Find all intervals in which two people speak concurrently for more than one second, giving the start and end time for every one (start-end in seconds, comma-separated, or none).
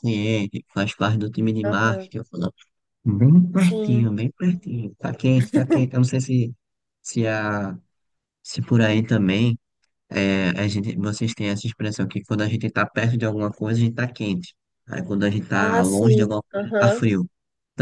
15.5-17.0